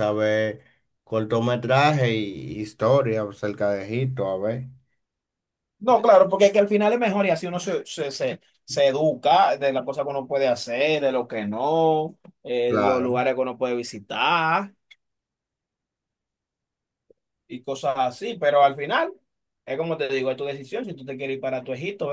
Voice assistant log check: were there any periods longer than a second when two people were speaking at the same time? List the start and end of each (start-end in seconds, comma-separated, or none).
none